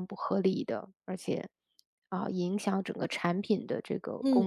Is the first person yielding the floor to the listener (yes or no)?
yes